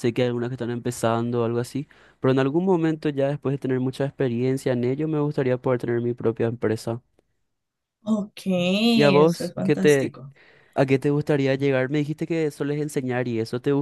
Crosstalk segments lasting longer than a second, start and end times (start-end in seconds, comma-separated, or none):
8.9-10.2